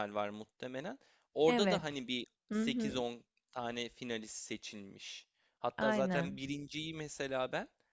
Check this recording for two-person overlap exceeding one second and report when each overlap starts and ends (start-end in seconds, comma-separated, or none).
none